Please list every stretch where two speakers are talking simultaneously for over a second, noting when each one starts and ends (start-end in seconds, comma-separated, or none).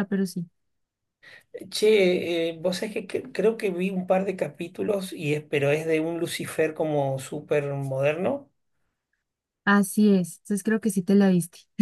none